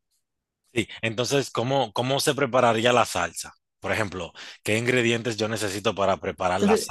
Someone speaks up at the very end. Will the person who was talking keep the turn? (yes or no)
yes